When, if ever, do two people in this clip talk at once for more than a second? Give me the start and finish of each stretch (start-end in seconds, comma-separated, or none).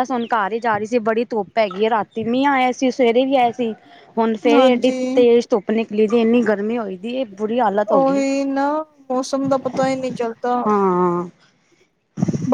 none